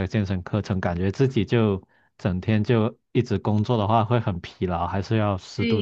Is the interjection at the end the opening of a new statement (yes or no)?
yes